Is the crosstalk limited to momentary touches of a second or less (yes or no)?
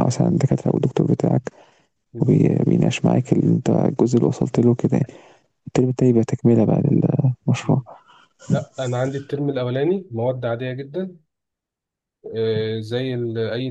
yes